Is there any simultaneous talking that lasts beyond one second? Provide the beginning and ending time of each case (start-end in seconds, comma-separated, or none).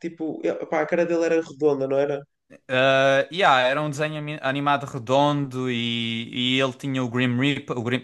none